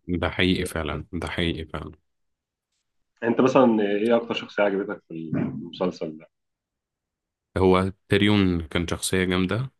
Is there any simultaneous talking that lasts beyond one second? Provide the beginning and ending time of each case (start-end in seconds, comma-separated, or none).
none